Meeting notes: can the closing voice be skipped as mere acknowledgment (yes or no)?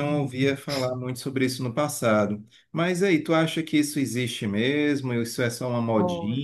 yes